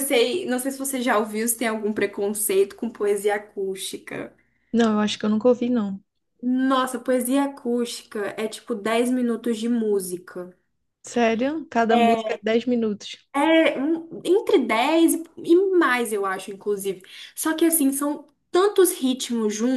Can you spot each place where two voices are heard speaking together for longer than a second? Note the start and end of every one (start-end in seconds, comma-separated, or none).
none